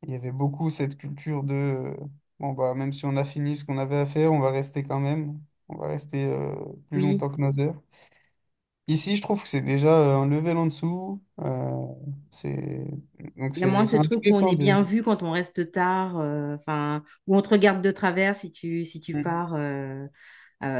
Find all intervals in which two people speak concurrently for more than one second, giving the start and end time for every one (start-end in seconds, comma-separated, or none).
13.6-14.8